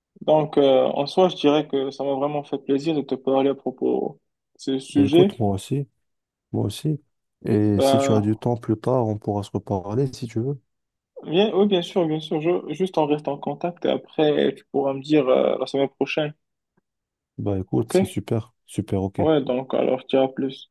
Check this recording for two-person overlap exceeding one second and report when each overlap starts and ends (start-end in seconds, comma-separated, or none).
none